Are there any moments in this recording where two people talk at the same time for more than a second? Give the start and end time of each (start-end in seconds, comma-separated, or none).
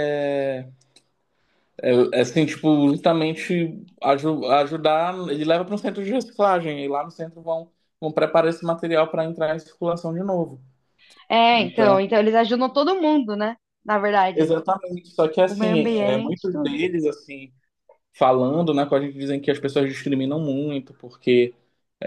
15.5-16.8